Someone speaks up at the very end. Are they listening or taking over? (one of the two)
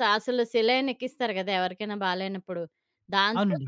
listening